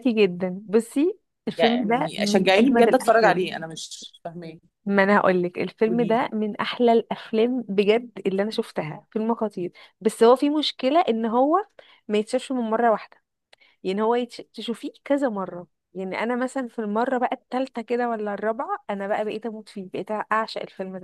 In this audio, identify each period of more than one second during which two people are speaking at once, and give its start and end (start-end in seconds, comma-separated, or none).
1.6-3.5